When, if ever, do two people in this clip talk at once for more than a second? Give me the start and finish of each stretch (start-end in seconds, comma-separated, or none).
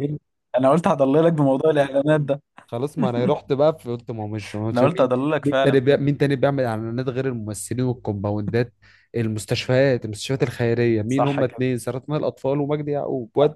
4.7-6.1